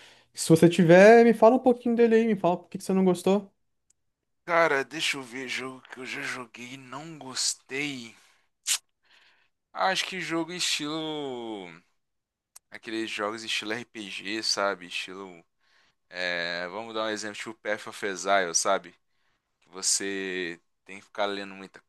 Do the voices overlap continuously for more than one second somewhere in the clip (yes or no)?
no